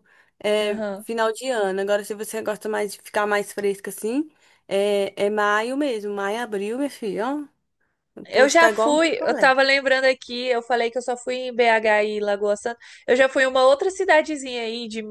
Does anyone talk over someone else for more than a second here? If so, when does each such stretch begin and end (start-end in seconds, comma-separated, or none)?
8.3-9.5